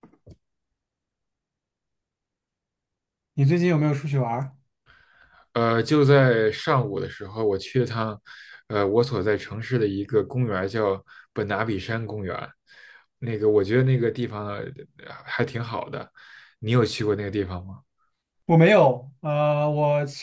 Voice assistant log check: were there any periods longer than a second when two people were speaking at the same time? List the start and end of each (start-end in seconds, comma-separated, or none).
none